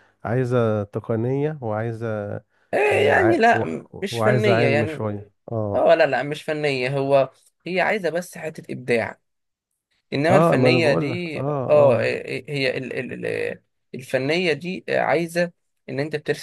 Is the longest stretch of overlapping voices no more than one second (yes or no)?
no